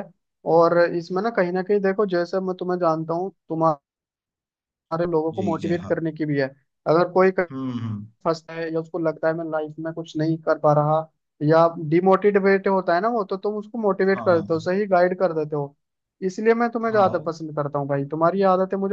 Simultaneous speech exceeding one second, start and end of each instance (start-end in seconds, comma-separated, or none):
none